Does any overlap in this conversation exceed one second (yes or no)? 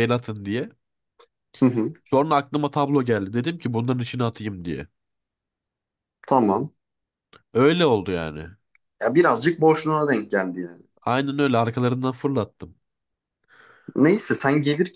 no